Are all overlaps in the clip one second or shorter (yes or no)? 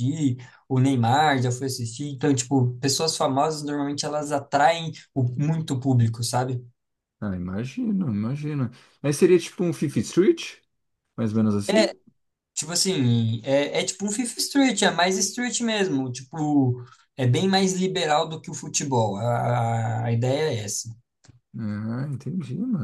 yes